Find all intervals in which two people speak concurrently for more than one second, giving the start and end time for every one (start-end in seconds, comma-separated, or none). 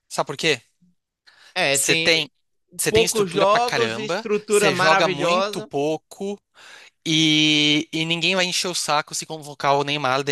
2.9-5.7